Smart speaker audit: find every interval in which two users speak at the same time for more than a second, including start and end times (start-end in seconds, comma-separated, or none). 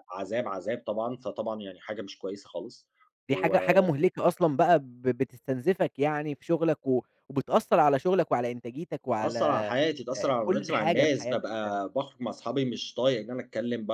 10.2-11.8